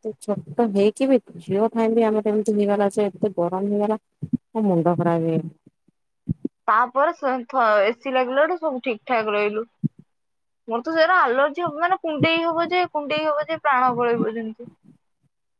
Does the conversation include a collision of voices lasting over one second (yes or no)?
no